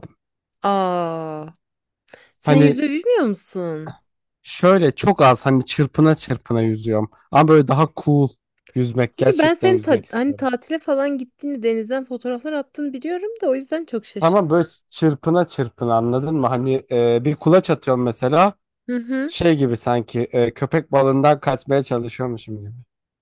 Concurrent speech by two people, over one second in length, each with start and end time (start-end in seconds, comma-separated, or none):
9.2-10.5